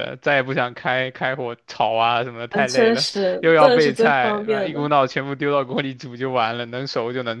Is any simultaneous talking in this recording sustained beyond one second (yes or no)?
yes